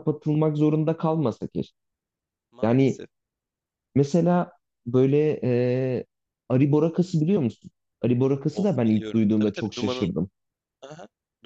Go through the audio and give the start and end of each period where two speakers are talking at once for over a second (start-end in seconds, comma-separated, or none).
8.5-10.1